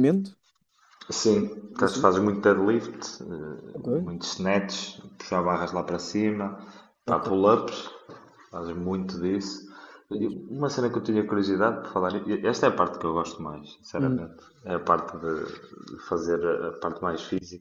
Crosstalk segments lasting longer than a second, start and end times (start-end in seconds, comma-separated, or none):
none